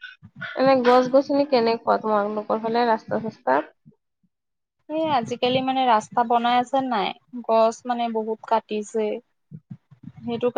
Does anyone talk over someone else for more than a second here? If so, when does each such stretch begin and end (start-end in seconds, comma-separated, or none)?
none